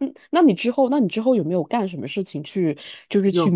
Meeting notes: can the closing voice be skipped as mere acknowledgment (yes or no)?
yes